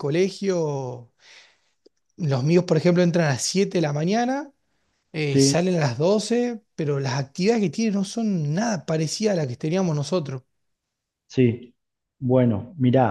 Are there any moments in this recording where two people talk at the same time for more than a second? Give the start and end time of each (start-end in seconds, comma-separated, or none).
none